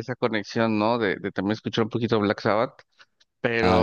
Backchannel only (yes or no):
yes